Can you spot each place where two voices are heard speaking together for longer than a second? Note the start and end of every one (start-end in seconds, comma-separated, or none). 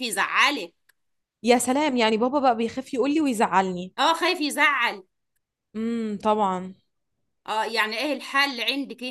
none